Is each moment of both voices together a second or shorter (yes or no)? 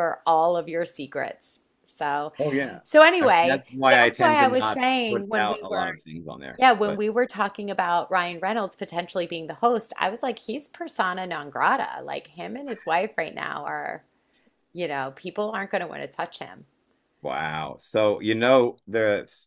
no